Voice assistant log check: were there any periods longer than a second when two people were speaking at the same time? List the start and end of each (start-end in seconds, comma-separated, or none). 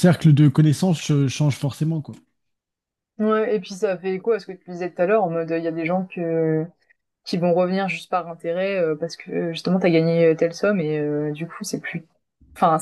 none